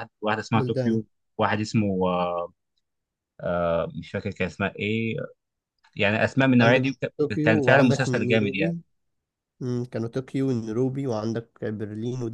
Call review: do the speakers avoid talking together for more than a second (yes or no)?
no